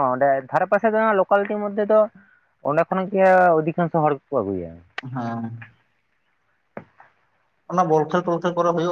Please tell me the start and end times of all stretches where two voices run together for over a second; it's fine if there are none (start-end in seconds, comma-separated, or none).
none